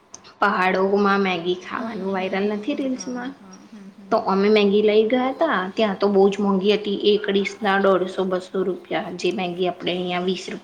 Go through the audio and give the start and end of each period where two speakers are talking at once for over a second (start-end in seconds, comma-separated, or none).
1.8-3.3